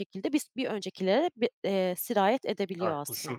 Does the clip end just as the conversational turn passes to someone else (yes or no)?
yes